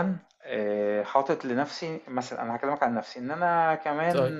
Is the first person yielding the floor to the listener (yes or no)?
no